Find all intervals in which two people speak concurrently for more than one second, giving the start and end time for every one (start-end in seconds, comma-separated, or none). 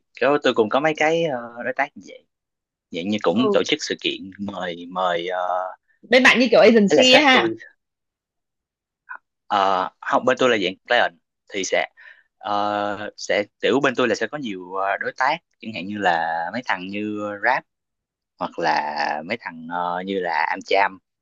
none